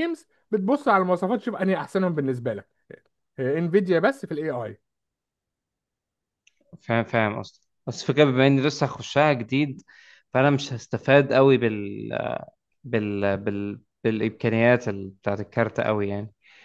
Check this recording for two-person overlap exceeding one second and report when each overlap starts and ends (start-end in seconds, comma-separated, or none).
none